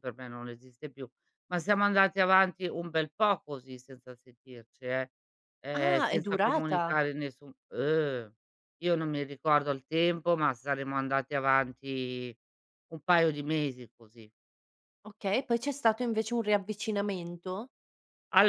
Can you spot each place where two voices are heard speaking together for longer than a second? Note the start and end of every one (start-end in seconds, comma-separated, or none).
5.7-7.0